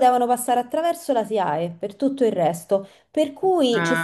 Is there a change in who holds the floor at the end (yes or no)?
no